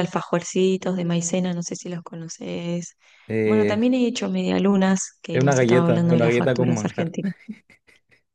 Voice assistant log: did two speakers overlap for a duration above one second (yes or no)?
yes